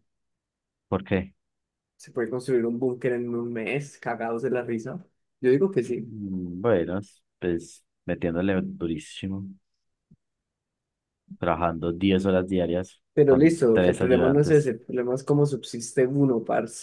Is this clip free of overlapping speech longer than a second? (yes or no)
no